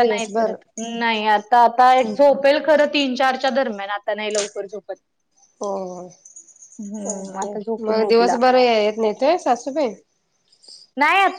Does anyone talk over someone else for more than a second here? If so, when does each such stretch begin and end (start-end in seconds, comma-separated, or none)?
6.8-8.4